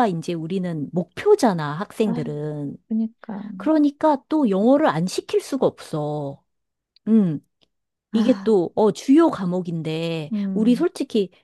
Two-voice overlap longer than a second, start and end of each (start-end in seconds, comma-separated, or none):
none